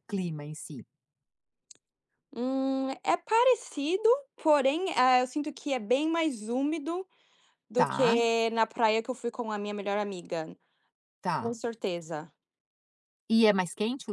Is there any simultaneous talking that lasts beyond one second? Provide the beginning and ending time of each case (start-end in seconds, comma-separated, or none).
none